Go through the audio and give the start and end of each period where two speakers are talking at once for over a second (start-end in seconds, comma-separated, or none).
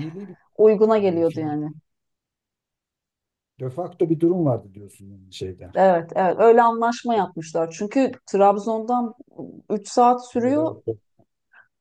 none